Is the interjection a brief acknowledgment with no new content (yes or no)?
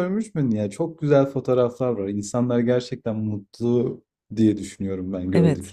no